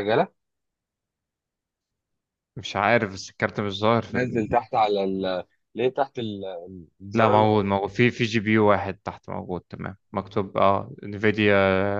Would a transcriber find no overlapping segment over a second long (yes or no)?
yes